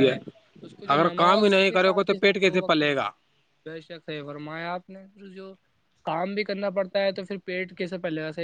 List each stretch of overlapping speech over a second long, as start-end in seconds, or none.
0.9-3.1